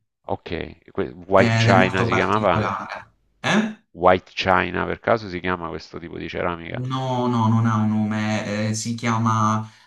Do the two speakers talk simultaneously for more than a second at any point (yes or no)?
yes